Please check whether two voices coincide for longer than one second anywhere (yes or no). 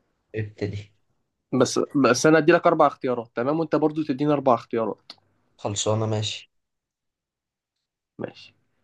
no